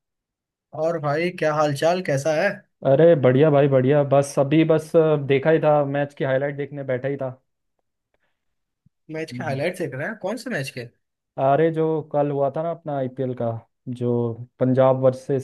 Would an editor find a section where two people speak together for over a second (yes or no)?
no